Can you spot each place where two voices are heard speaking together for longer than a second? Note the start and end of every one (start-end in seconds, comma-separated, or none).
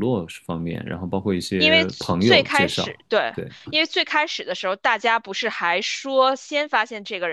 1.6-3.0